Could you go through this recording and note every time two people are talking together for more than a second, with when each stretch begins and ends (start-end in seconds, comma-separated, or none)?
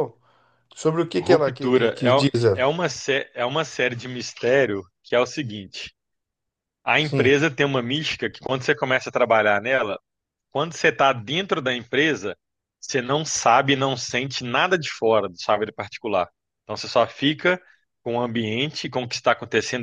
1.2-2.7